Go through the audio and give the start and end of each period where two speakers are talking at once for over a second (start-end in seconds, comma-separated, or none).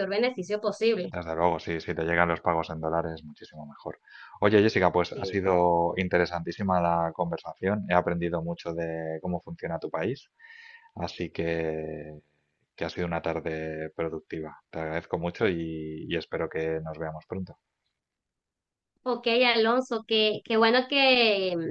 none